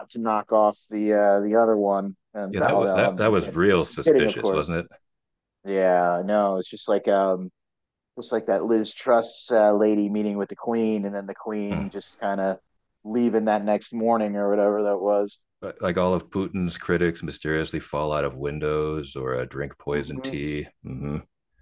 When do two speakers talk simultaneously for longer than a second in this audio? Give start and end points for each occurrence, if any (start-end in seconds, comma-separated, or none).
2.5-4.8